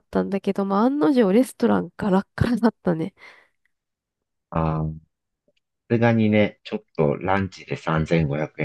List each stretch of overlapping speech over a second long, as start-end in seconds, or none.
none